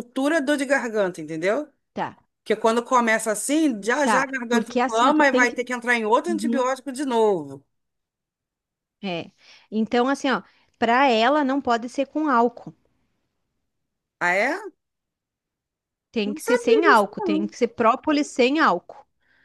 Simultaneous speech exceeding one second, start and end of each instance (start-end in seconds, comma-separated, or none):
4.0-5.6, 16.2-17.5